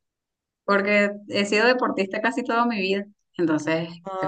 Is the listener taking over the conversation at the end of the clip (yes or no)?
no